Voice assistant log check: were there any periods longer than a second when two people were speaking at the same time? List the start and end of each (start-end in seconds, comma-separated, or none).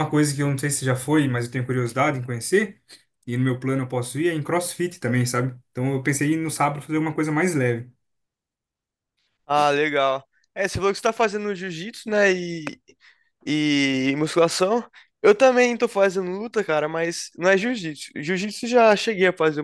none